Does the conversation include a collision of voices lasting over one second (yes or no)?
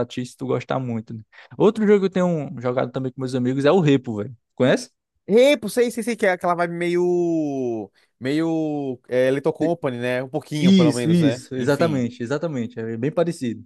yes